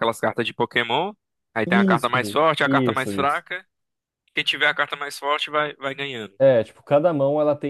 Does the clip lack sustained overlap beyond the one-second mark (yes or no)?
no